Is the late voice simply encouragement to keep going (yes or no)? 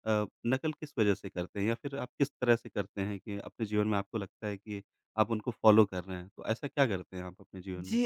no